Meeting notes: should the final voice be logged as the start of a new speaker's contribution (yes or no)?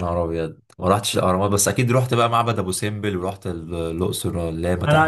yes